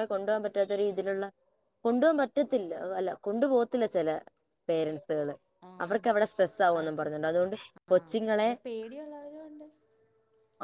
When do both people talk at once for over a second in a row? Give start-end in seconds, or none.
none